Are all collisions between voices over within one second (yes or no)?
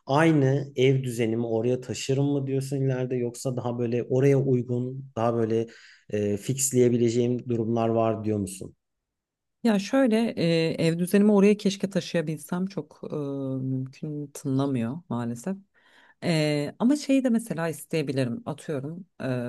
yes